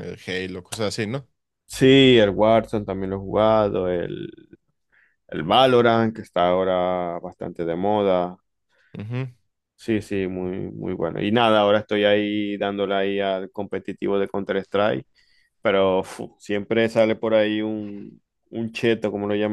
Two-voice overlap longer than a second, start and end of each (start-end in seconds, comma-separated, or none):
none